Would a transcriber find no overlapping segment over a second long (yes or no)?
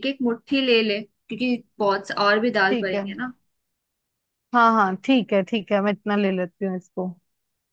yes